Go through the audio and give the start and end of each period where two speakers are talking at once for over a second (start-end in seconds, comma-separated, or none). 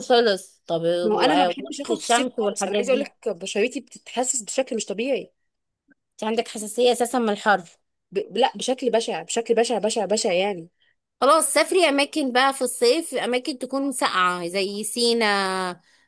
1.0-3.1